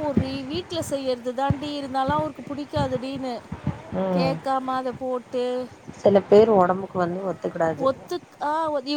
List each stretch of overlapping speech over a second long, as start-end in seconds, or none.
none